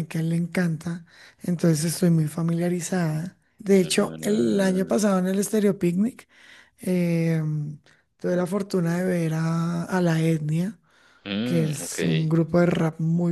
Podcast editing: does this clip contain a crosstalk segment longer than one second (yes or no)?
yes